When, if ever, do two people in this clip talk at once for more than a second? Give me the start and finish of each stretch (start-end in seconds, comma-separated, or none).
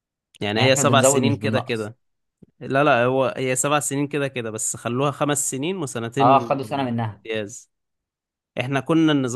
0.6-1.9